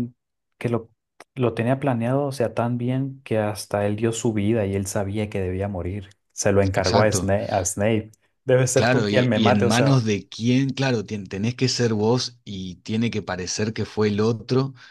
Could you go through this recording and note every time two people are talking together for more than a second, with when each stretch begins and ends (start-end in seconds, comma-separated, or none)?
8.8-10.1